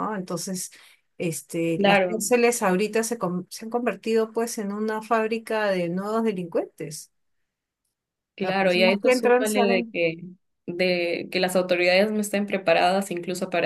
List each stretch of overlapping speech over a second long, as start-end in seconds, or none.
8.4-9.9